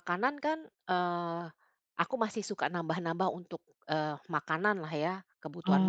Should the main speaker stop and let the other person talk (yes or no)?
yes